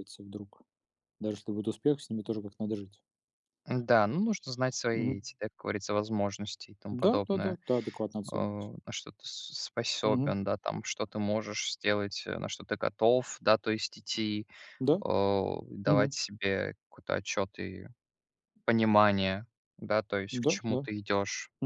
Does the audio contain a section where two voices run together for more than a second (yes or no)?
no